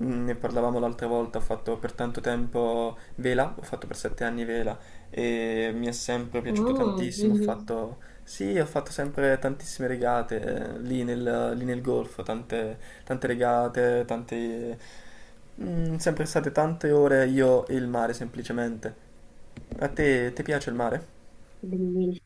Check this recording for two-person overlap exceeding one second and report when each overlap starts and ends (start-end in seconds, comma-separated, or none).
6.5-7.7